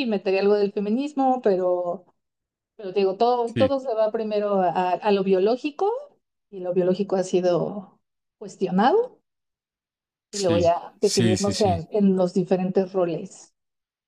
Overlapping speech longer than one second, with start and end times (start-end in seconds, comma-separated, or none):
10.3-11.8